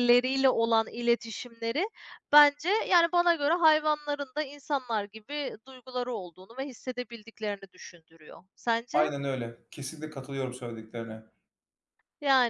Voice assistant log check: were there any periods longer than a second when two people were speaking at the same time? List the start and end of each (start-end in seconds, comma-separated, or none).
none